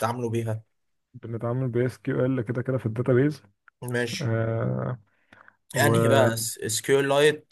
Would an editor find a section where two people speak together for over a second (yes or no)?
no